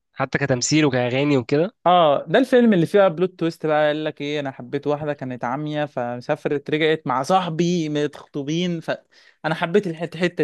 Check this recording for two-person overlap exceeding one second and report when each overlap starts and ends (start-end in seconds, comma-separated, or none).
none